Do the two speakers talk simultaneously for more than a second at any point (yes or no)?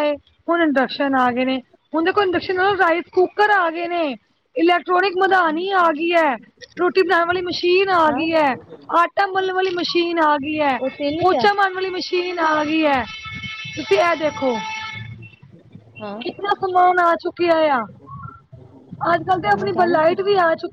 no